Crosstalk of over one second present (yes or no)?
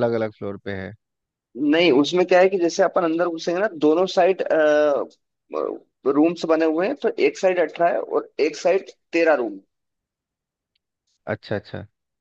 no